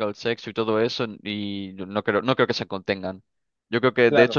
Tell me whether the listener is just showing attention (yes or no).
yes